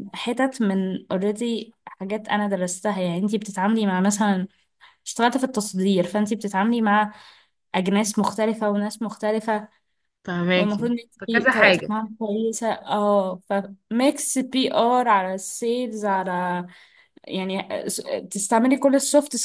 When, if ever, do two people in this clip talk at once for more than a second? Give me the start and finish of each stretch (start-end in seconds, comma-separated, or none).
10.6-11.9